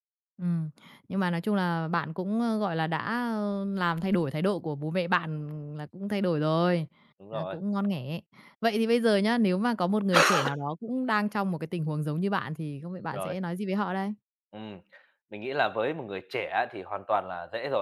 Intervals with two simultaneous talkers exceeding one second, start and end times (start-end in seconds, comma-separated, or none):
none